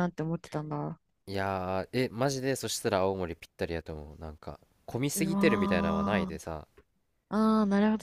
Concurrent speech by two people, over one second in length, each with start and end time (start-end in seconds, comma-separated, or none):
5.1-6.4